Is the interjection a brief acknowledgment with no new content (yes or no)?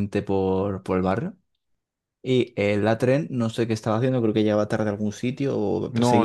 no